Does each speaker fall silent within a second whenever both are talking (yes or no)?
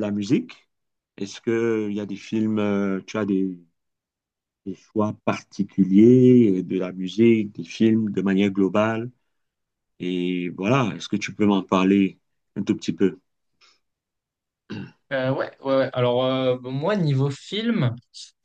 yes